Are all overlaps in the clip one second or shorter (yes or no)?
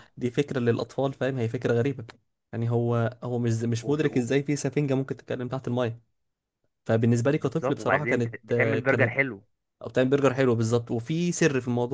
no